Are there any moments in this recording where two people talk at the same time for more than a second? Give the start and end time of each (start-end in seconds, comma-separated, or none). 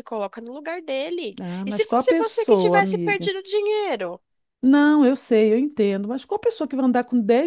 1.4-3.3